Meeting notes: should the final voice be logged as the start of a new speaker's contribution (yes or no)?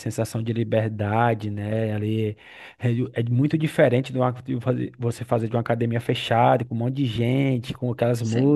no